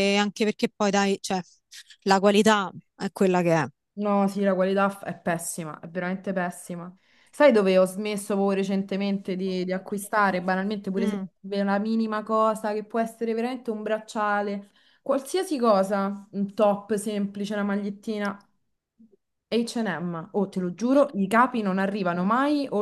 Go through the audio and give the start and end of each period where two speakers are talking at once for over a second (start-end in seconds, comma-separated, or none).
none